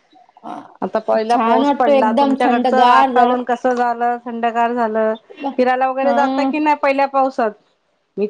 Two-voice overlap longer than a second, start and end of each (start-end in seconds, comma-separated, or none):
1.3-3.4